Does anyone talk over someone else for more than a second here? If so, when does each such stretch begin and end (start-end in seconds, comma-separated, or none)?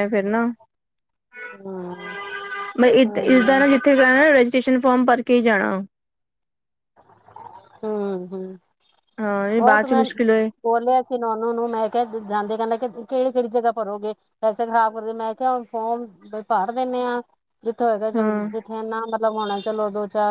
none